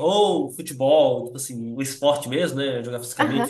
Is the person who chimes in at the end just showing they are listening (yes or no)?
yes